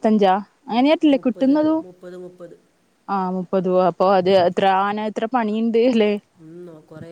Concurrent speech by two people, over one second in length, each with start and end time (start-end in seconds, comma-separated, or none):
none